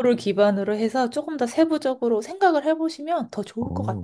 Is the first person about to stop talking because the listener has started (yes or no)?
yes